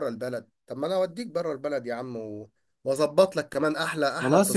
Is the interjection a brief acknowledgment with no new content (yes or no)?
no